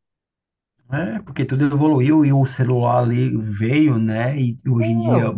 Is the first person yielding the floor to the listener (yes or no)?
no